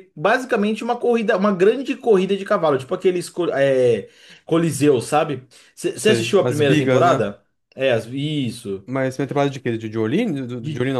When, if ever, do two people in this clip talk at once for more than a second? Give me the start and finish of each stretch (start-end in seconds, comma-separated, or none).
5.9-7.2